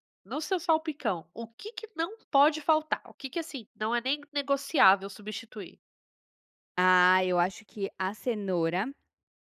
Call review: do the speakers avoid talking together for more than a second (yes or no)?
yes